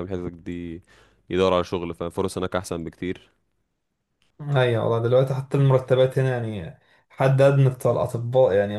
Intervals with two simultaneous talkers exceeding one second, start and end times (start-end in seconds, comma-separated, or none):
none